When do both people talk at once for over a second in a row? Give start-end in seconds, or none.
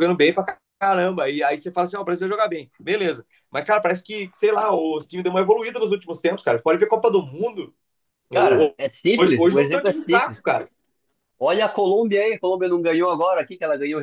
9.2-10.4